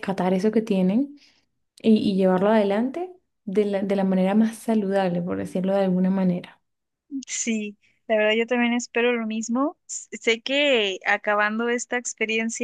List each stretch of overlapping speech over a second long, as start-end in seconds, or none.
none